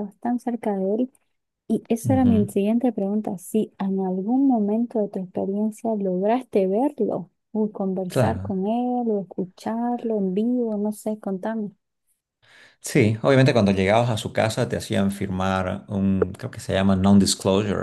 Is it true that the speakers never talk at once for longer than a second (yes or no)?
yes